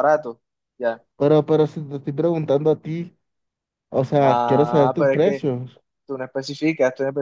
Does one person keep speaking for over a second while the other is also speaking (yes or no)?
yes